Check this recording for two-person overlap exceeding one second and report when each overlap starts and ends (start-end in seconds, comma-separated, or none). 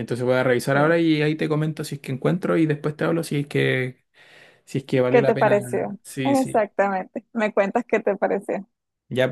5.1-6.6